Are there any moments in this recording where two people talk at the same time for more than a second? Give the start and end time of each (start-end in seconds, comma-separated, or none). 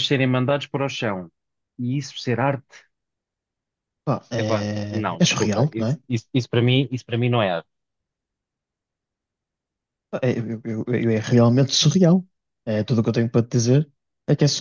4.3-6.0